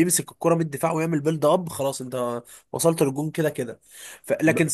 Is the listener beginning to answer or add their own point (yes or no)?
no